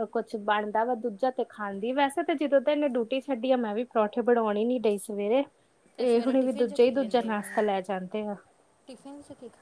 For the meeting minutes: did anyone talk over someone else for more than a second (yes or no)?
yes